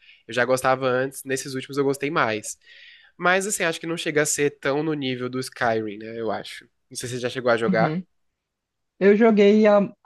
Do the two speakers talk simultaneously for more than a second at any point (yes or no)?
no